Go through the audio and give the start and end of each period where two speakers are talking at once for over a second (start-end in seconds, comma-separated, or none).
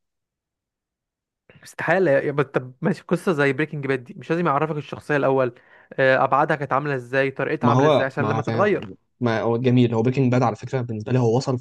7.6-8.9